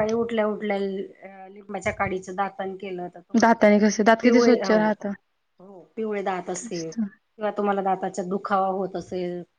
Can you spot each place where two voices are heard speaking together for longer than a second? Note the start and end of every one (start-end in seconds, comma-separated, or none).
3.4-5.1